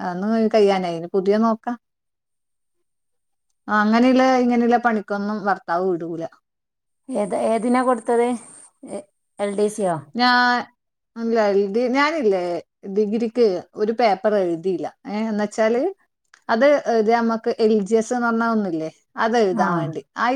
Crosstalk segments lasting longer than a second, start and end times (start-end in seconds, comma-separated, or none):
none